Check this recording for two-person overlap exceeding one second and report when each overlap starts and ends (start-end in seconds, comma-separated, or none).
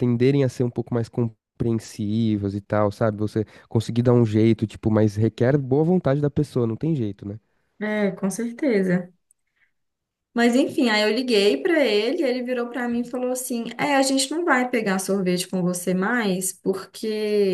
none